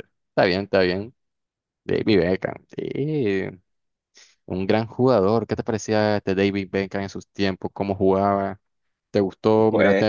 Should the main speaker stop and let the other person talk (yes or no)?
no